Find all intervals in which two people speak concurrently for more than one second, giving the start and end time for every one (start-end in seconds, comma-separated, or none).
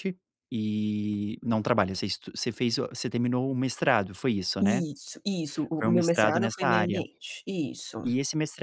5.8-7.0